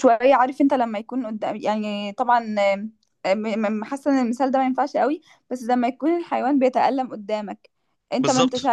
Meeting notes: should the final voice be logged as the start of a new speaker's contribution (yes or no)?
no